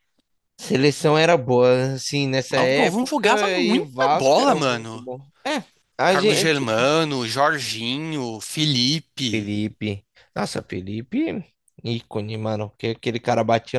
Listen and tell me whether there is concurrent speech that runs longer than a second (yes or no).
yes